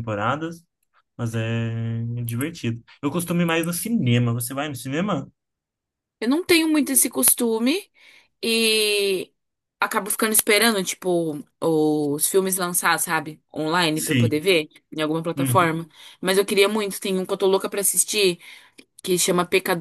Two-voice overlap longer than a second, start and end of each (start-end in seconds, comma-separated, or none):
none